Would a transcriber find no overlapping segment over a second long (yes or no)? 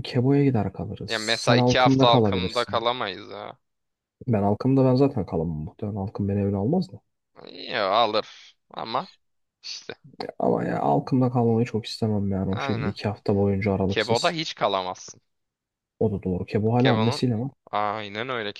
no